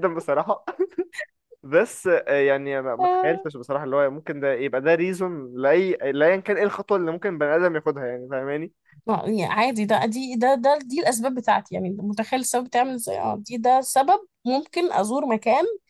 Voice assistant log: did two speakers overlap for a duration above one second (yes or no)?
no